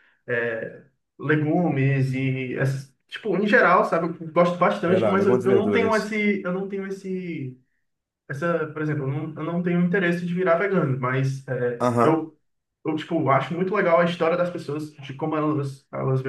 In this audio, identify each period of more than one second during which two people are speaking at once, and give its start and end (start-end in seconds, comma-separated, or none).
4.9-6.1